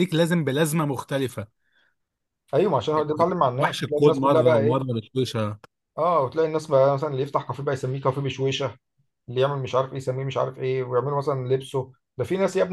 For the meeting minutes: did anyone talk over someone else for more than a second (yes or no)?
yes